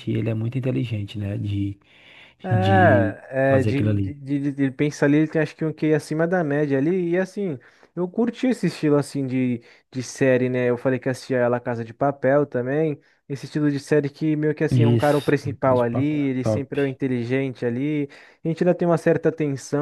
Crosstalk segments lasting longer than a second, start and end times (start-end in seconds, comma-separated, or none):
2.5-4.2, 14.7-16.7